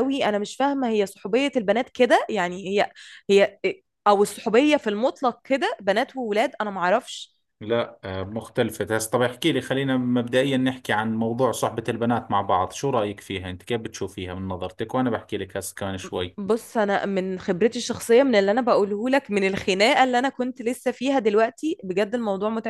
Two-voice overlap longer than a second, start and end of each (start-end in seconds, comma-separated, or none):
none